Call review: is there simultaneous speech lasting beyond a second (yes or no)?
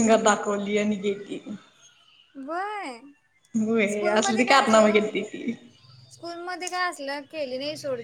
yes